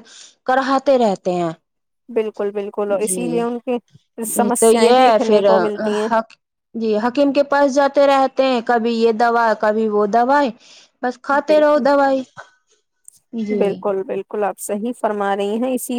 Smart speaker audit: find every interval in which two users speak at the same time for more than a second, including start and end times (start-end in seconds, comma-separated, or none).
3.0-5.4